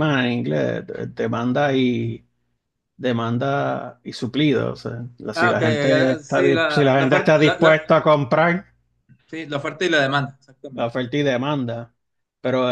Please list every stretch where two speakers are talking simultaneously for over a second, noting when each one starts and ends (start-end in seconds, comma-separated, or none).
5.3-7.9